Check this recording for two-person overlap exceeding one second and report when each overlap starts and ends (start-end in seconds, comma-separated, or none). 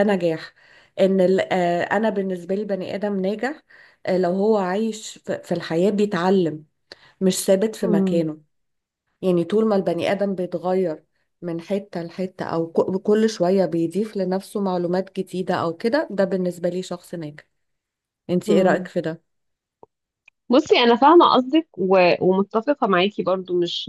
none